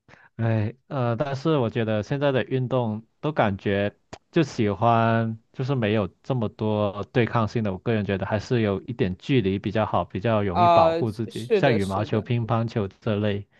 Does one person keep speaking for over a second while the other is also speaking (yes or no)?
yes